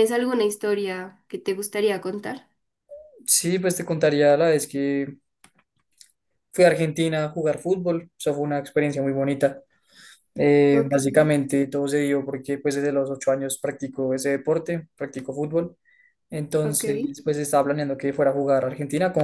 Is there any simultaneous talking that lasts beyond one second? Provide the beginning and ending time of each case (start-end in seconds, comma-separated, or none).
none